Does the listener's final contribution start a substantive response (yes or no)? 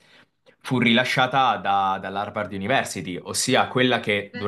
no